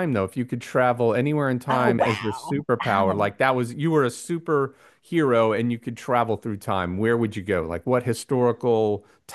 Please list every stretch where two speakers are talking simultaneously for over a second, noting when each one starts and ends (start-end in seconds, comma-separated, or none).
1.7-3.3